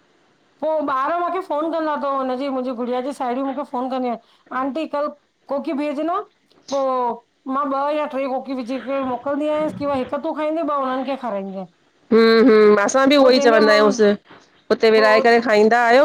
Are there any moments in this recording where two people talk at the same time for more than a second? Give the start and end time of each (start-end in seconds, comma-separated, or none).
none